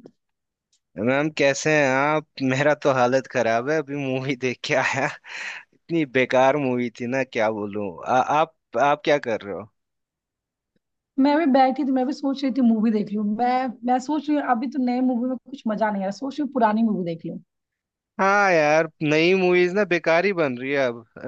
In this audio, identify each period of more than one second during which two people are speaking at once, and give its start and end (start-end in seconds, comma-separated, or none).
none